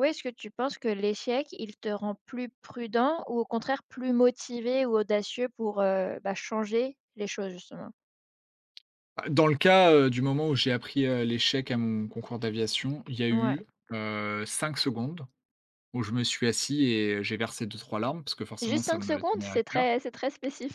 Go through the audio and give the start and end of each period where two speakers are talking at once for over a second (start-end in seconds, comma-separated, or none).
18.6-19.9